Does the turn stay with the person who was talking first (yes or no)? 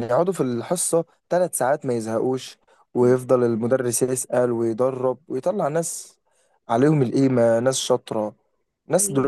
yes